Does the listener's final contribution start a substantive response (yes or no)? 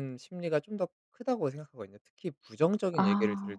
no